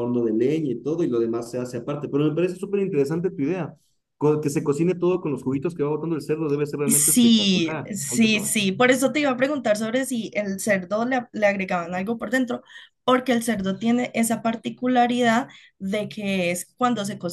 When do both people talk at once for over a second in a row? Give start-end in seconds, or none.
6.9-8.5